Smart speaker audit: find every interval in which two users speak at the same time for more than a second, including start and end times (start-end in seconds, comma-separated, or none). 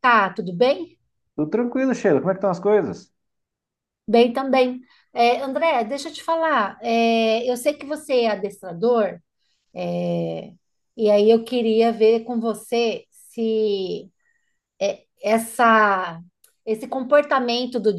none